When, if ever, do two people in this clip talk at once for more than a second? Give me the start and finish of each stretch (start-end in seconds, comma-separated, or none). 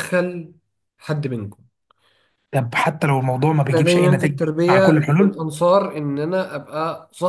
3.7-5.4